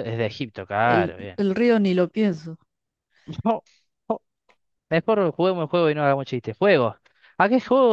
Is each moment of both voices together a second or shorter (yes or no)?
yes